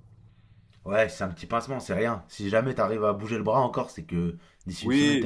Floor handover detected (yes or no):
yes